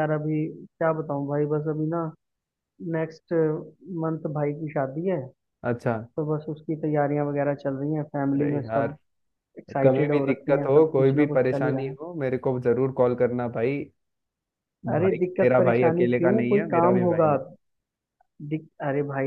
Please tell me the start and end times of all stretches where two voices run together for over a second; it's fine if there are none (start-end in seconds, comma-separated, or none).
9.8-11.9, 15.0-17.3